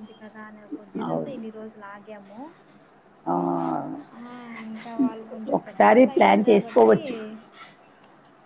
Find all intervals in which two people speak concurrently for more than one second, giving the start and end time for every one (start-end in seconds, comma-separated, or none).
5.6-7.0